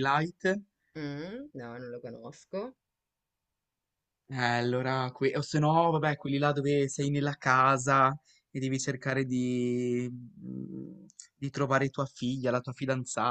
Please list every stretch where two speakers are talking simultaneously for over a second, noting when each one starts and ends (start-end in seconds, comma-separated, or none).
none